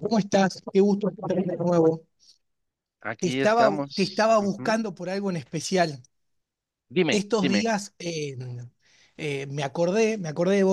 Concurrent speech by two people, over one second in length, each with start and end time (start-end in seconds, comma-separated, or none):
3.2-4.8